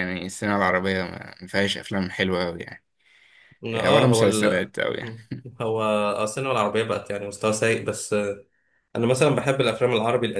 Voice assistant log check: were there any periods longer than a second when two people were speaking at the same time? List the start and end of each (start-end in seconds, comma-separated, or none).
3.7-5.3